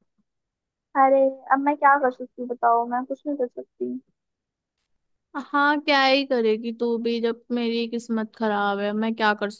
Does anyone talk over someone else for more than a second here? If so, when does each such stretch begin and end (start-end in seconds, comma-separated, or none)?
none